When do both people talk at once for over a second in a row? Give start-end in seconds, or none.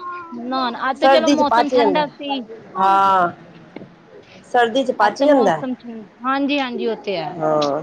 none